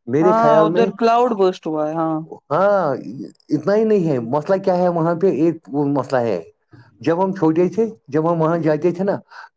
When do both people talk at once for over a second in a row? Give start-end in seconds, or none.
none